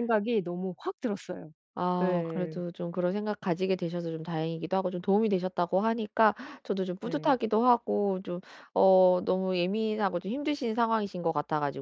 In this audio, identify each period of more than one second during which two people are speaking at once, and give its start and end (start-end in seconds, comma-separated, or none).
none